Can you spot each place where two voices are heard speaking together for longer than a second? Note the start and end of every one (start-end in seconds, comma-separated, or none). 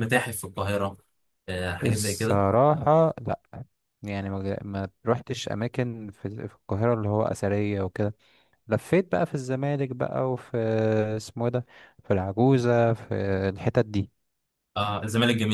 none